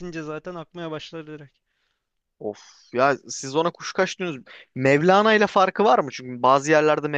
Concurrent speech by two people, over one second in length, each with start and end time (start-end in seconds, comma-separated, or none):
none